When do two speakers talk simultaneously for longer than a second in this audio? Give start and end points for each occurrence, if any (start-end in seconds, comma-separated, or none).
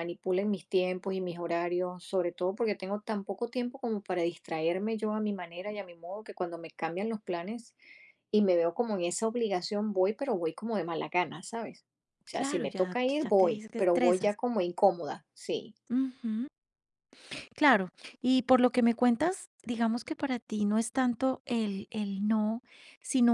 12.3-14.3